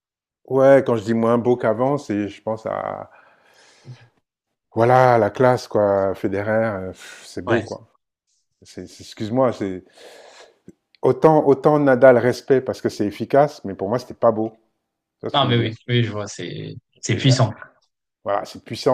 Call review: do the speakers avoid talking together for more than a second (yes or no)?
yes